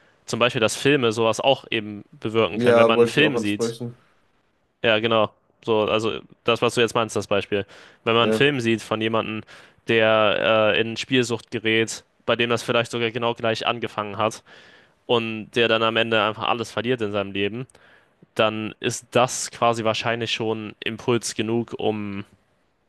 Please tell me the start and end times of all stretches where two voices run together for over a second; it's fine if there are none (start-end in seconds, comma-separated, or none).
2.5-3.8